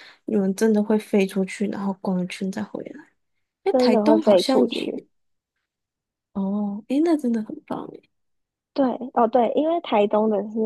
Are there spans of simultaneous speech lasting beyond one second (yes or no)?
yes